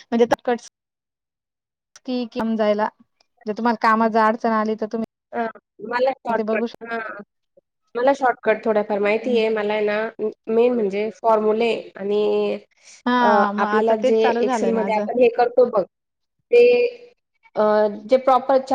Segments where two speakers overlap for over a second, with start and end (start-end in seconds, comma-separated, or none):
13.2-15.1